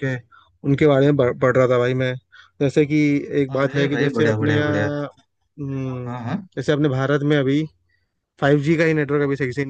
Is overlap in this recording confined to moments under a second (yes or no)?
no